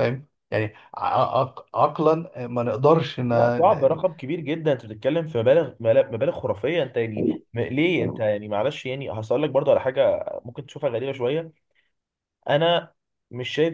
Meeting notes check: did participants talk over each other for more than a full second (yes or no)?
no